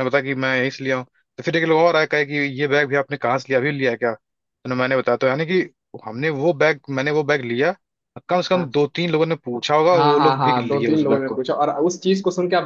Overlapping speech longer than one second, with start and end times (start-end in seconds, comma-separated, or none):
9.9-11.4